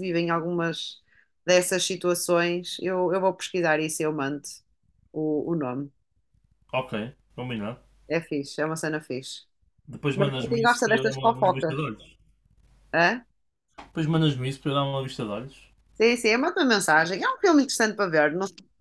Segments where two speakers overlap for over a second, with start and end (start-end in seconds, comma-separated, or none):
10.2-11.8